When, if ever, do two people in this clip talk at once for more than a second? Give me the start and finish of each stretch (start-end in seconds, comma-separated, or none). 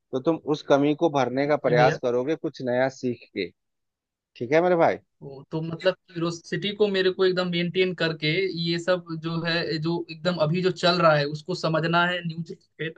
none